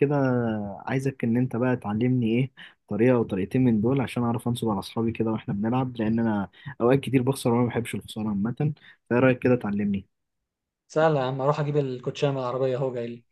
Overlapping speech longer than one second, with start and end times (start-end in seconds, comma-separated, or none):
none